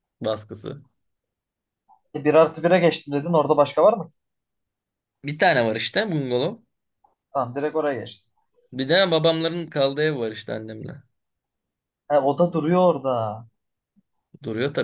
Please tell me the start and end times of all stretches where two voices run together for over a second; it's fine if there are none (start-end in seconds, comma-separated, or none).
none